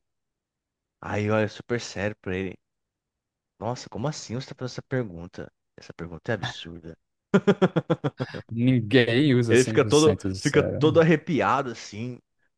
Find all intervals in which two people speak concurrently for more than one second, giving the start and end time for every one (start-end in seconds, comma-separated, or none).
9.5-11.0